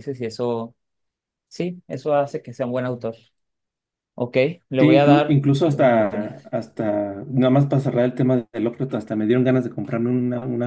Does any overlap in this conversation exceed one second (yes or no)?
yes